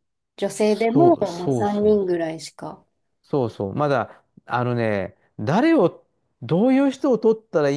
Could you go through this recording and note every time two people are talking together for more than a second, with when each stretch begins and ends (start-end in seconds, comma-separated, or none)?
0.6-2.2